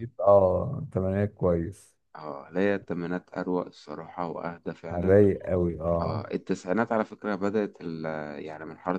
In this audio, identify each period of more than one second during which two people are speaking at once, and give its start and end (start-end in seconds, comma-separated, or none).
none